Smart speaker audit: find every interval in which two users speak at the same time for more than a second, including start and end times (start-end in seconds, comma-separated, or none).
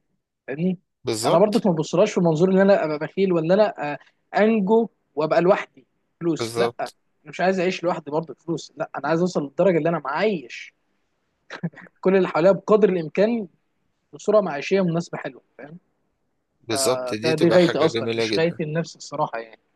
16.8-18.6